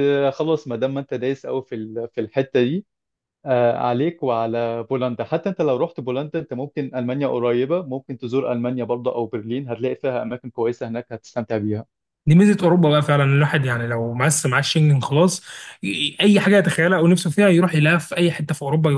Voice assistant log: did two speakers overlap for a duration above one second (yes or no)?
no